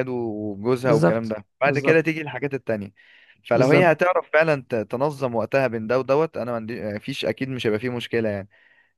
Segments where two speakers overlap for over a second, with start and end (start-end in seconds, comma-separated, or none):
0.8-2.1